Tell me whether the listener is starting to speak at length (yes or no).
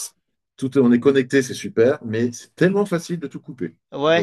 yes